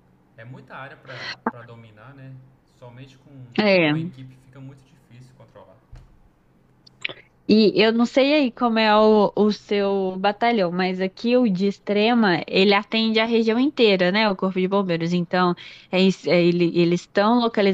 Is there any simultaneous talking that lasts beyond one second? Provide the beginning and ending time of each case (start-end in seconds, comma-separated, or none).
none